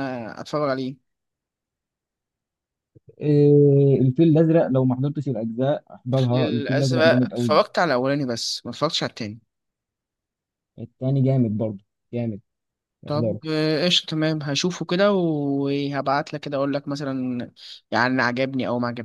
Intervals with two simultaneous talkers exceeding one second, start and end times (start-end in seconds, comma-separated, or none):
6.1-7.6